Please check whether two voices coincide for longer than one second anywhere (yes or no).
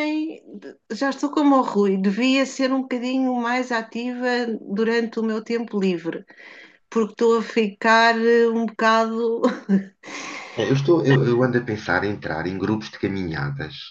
no